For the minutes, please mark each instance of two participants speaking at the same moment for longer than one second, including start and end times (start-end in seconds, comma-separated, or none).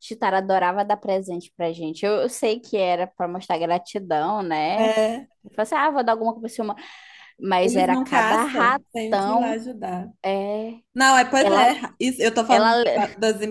7.6-9.6